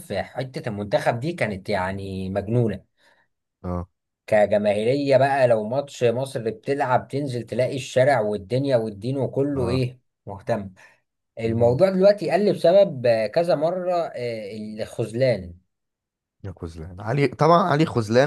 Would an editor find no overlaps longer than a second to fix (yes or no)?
yes